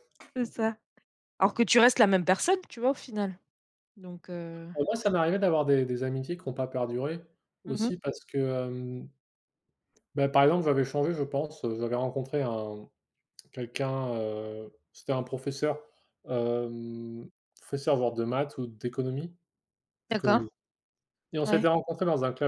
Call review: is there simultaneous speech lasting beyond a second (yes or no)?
no